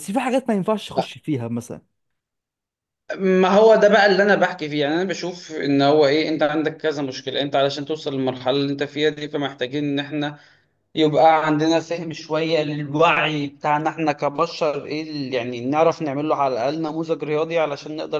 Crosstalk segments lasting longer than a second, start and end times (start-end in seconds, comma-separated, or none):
none